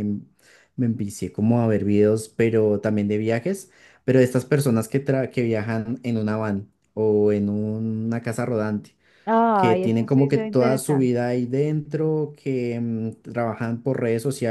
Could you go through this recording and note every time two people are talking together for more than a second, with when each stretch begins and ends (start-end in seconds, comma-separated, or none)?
9.5-11.2